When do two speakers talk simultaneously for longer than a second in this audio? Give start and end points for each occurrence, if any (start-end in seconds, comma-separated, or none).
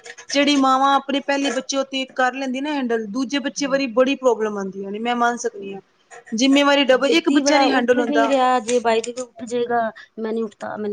none